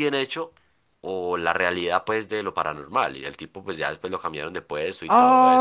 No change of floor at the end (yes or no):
no